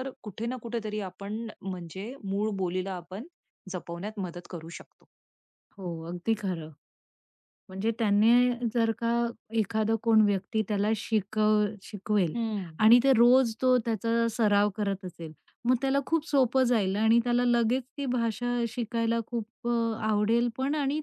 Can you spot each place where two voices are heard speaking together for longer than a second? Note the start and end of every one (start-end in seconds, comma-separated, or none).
none